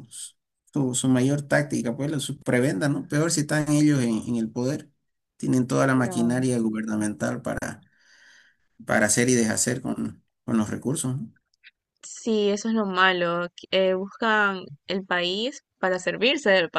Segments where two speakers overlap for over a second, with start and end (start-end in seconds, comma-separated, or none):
none